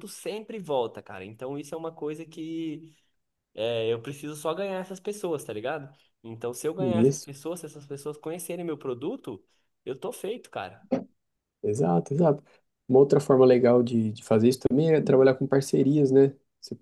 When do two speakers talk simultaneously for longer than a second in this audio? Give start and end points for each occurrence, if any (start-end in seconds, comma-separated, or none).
none